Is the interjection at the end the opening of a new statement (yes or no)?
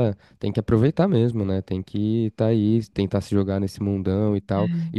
no